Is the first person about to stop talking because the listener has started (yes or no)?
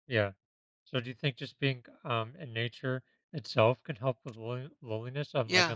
yes